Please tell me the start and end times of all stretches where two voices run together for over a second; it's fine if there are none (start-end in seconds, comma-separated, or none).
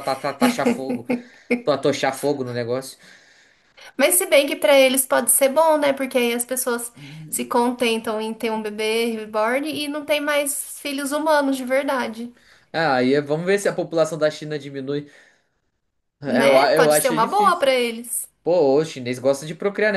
16.3-17.7